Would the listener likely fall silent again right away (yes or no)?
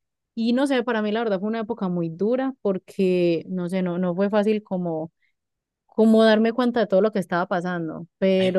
yes